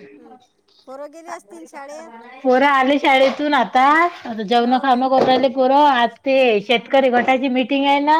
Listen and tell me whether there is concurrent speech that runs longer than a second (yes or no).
no